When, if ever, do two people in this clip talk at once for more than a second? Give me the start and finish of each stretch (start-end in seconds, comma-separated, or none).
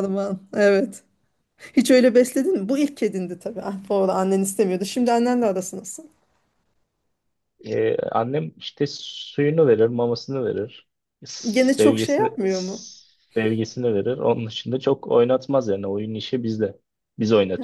11.5-12.8